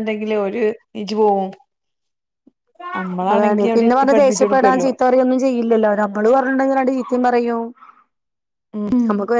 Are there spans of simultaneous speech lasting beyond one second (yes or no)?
yes